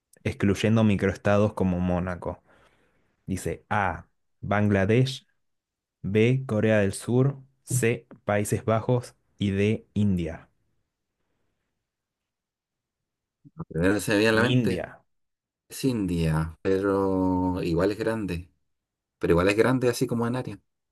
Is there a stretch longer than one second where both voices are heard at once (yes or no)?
no